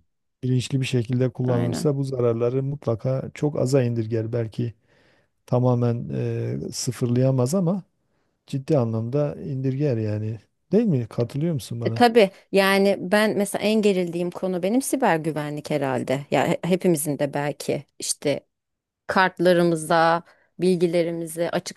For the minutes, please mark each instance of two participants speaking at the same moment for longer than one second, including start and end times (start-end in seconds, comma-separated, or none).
none